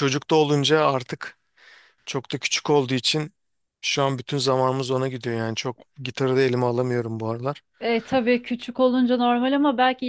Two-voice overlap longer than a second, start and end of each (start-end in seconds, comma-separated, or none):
none